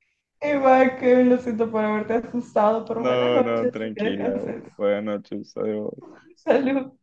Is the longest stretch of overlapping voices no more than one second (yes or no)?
no